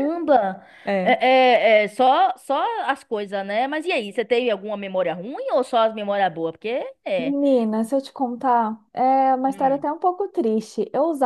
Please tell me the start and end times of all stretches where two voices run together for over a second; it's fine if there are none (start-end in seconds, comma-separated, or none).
none